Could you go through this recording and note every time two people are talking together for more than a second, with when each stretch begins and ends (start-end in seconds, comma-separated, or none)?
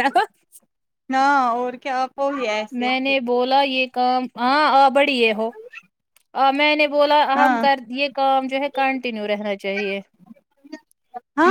none